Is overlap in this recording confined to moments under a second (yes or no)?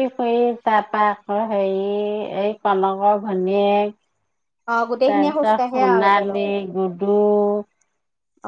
no